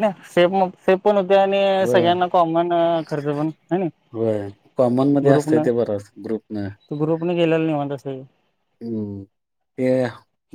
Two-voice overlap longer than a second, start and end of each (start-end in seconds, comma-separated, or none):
none